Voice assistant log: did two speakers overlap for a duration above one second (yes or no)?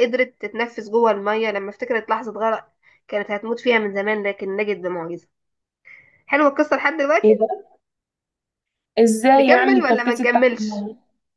yes